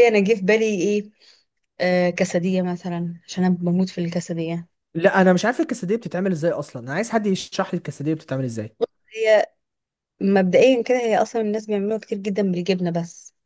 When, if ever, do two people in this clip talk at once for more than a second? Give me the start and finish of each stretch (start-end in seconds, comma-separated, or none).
none